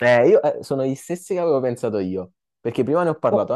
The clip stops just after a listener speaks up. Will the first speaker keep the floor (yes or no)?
yes